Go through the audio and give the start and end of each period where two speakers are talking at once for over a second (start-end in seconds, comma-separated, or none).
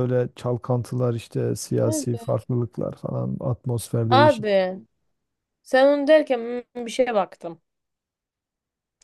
none